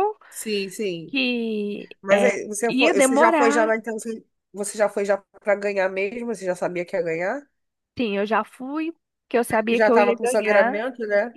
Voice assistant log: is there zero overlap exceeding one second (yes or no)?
no